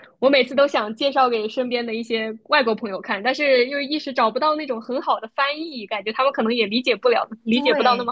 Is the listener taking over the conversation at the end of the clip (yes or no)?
yes